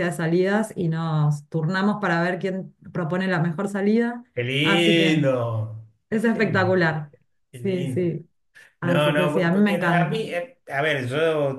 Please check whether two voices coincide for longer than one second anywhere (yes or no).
yes